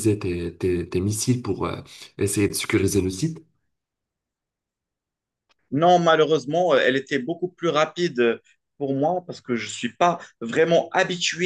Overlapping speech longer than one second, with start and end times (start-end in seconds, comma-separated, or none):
none